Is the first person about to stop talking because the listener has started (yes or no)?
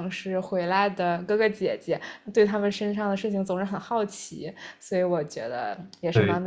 yes